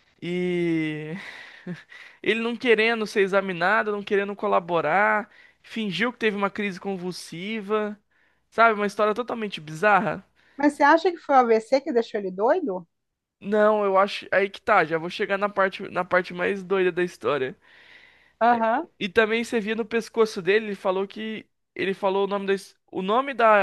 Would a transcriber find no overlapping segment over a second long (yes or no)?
yes